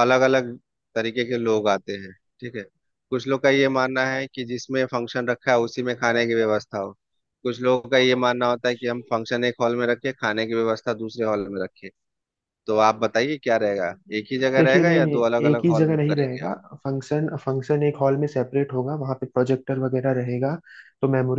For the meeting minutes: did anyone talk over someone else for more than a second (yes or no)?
yes